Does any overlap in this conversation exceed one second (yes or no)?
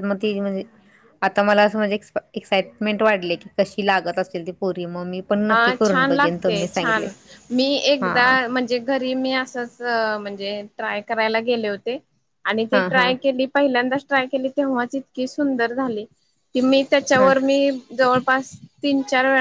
yes